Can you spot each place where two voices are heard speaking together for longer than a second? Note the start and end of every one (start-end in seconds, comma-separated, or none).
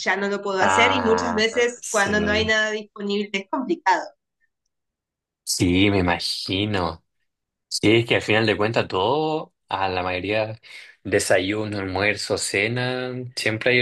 0.6-2.5